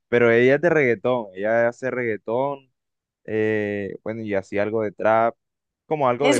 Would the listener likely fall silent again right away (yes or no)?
no